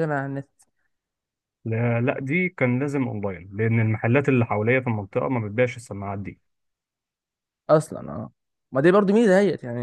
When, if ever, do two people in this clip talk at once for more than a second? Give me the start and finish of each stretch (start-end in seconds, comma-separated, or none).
none